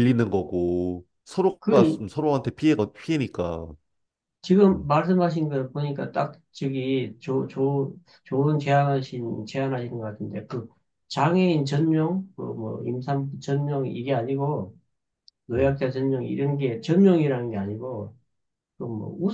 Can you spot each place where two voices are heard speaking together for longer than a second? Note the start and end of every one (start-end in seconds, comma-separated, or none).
none